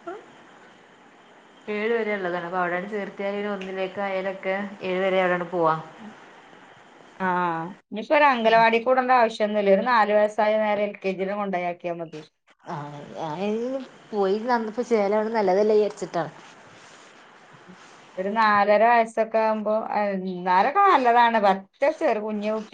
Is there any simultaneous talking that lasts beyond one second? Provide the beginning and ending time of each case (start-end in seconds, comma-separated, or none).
none